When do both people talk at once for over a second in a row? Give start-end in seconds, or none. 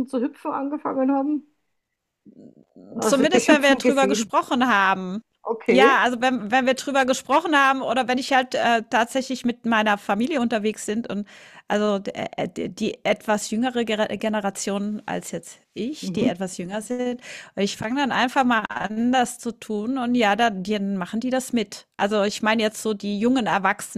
3.0-4.3